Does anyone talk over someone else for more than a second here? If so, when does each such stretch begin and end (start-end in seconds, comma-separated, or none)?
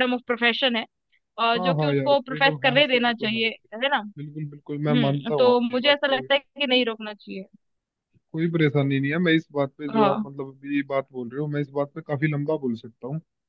1.6-4.0, 4.7-6.3